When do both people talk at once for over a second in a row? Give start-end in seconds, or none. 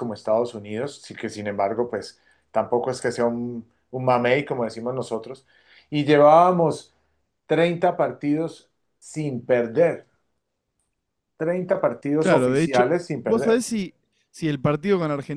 12.2-13.7